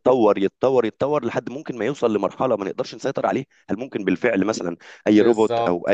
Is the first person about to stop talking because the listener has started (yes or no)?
yes